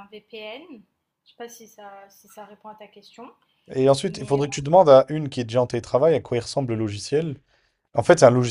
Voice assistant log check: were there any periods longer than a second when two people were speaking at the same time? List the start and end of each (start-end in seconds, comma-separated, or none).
none